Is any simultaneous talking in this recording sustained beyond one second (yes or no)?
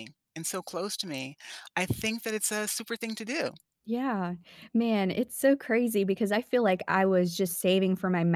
no